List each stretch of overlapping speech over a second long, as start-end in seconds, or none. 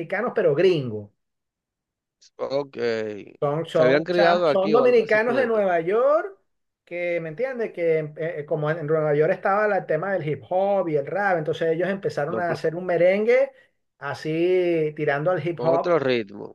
3.7-5.5